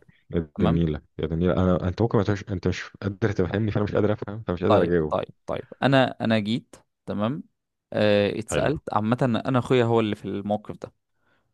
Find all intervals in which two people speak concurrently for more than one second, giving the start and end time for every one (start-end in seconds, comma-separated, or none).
none